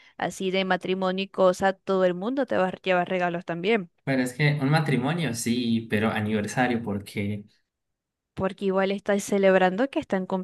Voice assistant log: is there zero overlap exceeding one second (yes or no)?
yes